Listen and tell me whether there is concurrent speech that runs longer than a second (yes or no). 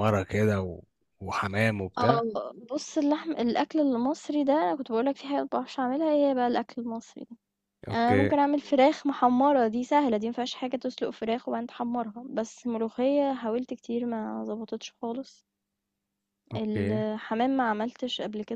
no